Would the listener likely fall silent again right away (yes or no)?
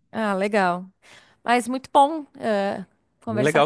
no